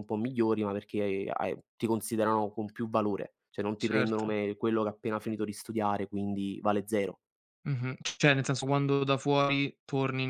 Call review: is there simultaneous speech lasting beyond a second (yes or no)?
no